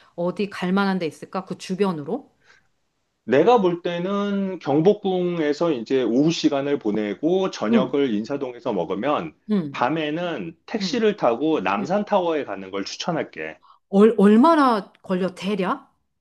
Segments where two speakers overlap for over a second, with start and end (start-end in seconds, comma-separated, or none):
none